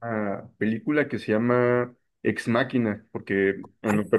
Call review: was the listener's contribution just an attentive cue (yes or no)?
yes